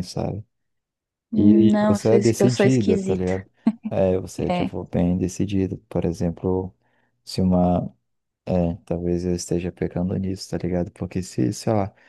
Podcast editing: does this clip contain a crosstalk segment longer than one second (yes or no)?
yes